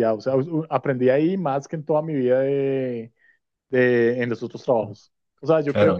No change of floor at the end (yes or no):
yes